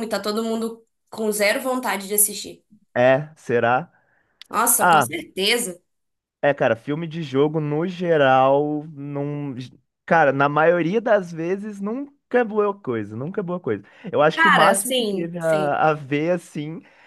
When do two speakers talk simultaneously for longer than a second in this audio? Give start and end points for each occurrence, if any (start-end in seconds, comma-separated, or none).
14.3-15.8